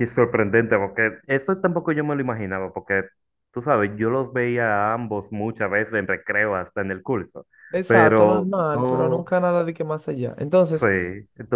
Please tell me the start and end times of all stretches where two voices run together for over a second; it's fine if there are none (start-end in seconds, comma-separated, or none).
7.7-9.2